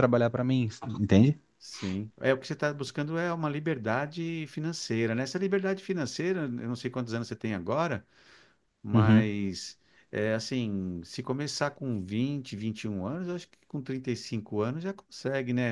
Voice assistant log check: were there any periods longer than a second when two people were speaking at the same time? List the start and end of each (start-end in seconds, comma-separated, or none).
none